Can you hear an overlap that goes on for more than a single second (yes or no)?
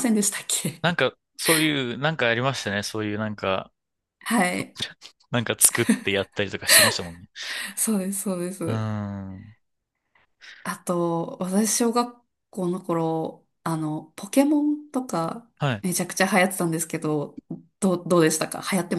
no